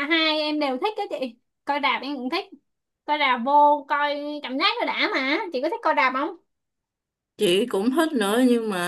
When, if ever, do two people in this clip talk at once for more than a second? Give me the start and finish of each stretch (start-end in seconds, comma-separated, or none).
none